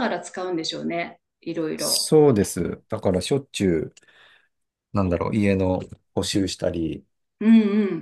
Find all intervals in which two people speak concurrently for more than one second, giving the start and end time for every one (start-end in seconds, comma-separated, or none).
none